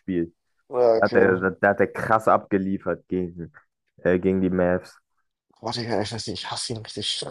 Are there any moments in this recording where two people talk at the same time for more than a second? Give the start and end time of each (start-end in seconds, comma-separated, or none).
none